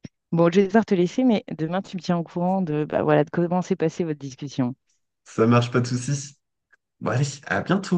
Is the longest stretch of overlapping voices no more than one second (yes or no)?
yes